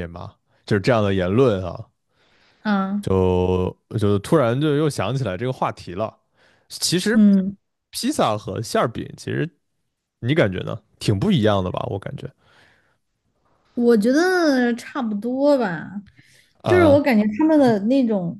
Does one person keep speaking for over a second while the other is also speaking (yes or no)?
no